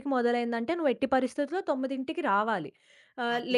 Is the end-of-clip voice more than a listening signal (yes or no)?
no